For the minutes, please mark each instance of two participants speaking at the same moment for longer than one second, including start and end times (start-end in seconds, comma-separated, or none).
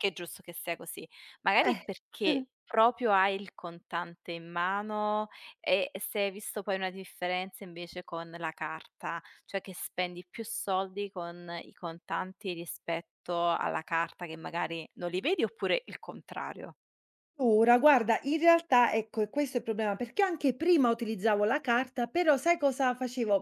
none